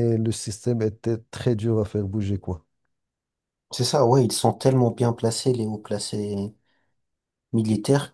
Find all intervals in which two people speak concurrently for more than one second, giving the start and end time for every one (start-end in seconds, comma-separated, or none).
none